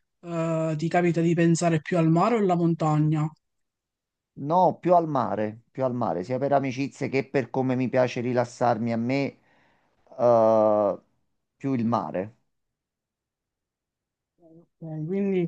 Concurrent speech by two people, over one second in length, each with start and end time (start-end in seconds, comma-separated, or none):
none